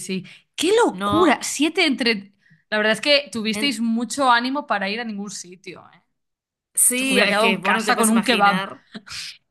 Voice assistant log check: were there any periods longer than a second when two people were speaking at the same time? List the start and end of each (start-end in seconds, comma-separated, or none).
7.0-8.7